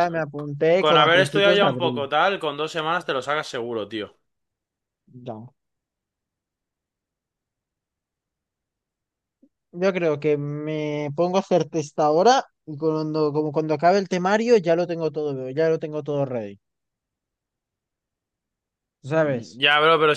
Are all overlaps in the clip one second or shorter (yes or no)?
no